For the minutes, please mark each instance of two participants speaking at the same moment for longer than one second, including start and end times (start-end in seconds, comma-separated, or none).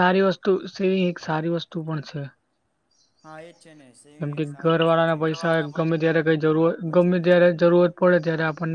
4.2-5.9